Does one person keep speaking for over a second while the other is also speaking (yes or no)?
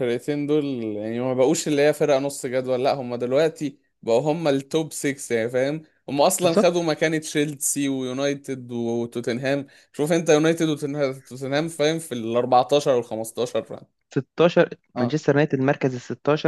no